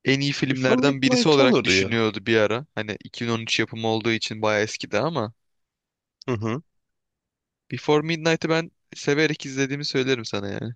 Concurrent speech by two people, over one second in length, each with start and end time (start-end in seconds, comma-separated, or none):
0.5-1.9